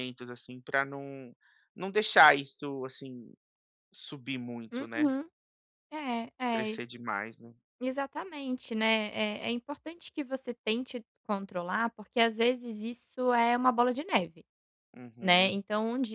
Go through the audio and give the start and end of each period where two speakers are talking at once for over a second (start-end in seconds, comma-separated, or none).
none